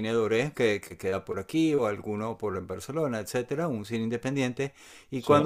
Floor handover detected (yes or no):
no